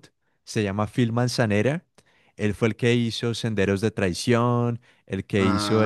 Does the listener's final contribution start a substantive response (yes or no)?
yes